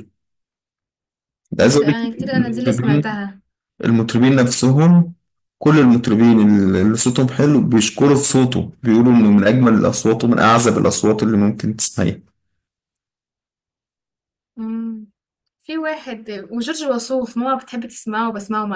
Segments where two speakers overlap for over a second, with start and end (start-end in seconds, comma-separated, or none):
1.6-3.2